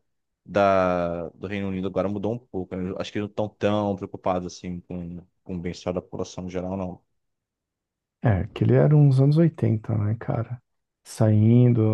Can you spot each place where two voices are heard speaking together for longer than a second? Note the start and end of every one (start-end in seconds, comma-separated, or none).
none